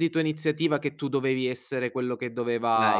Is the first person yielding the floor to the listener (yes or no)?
yes